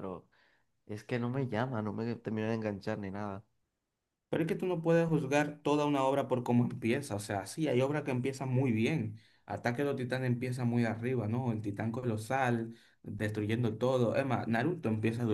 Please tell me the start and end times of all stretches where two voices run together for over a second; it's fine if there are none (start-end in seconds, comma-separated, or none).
none